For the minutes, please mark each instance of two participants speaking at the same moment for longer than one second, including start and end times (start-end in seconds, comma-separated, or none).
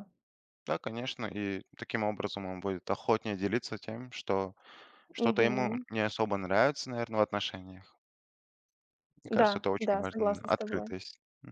9.3-10.9